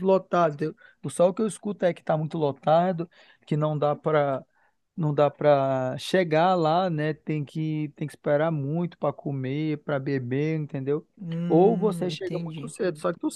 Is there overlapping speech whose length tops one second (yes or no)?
yes